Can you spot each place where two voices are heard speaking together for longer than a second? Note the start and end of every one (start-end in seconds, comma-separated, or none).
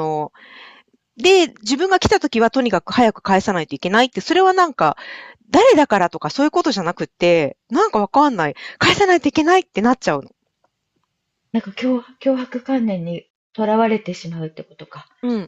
none